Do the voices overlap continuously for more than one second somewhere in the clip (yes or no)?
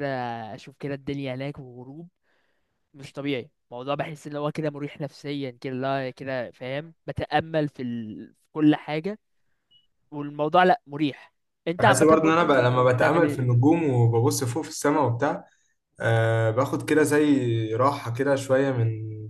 yes